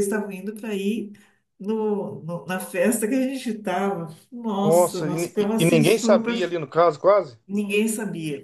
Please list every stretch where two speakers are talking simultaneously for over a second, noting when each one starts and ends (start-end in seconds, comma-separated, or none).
4.6-6.3